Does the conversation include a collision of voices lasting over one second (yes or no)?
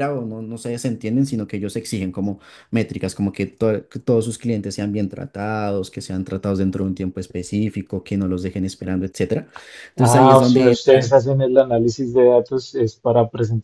yes